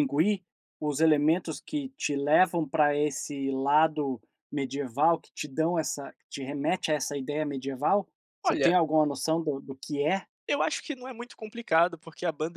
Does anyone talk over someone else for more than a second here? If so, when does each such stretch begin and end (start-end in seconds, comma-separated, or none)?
none